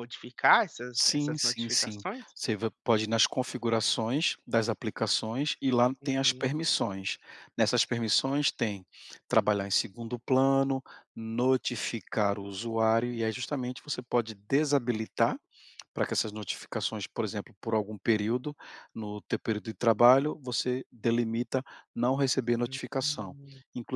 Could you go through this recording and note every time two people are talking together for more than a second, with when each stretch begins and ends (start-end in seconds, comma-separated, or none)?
0.9-2.2